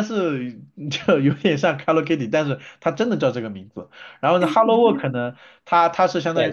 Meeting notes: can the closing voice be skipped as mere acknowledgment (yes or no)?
no